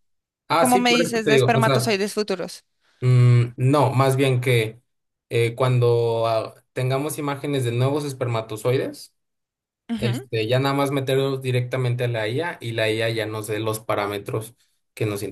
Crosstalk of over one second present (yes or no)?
yes